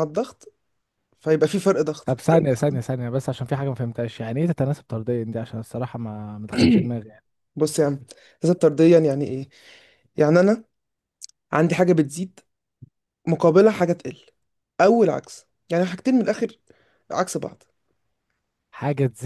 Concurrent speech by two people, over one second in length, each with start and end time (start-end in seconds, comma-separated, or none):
none